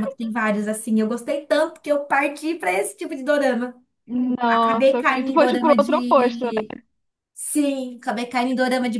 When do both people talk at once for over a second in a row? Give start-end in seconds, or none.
4.5-6.5